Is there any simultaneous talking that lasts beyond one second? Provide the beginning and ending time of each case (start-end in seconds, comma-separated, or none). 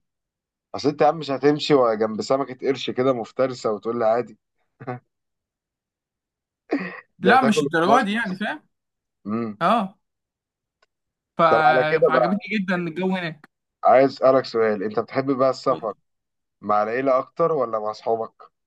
7.2-8.4